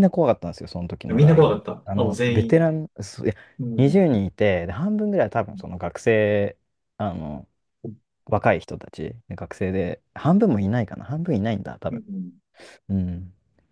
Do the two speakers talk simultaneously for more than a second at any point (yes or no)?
yes